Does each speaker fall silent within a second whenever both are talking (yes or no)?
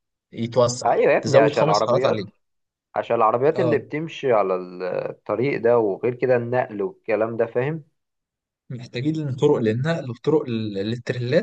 no